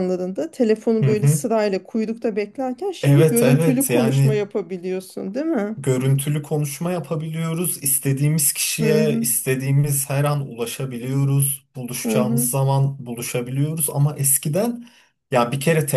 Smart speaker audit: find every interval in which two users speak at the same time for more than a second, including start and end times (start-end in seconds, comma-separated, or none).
3.0-4.4